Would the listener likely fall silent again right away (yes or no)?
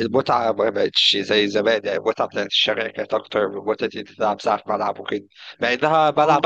yes